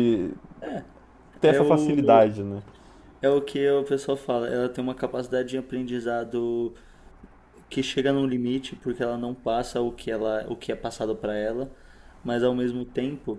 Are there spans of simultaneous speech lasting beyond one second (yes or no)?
no